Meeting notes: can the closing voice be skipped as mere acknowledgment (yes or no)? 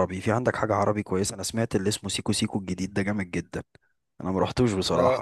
yes